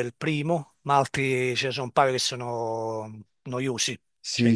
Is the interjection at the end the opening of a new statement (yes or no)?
yes